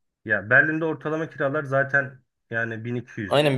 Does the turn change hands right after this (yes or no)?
yes